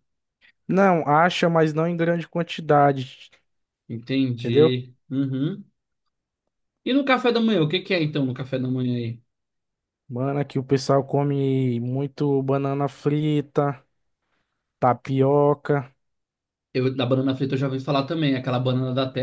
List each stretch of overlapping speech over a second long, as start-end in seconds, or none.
none